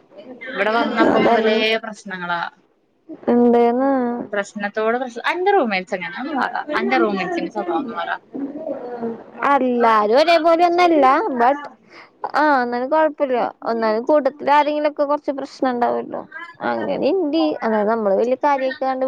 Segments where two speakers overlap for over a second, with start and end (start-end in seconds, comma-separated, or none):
none